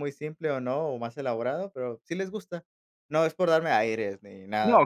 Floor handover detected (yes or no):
yes